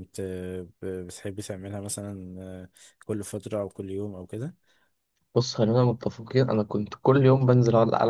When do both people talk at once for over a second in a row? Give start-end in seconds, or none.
none